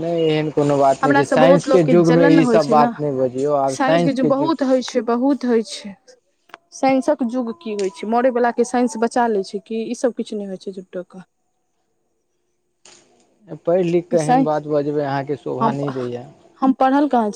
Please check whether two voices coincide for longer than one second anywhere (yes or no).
yes